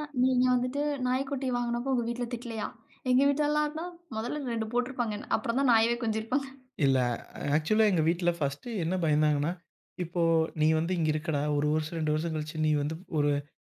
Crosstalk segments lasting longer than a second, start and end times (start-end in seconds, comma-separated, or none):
none